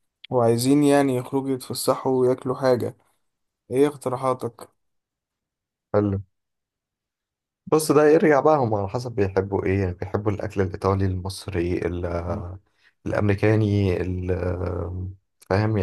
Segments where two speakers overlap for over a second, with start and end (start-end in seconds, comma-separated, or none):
none